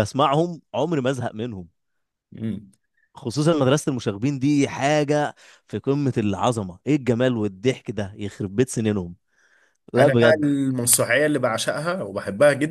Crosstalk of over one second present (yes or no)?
no